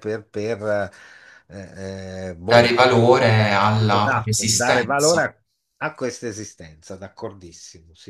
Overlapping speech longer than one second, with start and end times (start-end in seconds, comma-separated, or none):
3.9-5.2